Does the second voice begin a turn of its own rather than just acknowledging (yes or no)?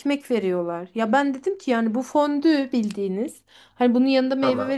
no